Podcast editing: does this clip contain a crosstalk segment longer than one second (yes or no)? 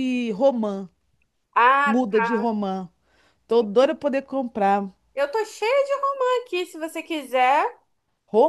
no